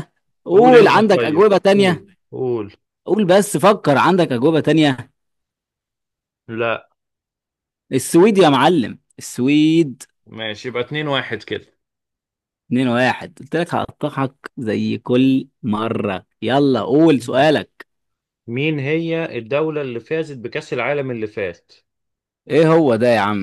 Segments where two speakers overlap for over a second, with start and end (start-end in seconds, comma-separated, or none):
0.5-2.0